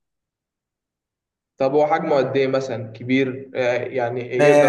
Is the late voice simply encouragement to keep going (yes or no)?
no